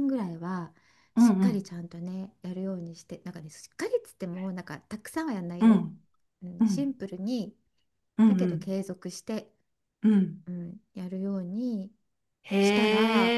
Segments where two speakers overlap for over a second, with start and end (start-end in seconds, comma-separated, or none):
none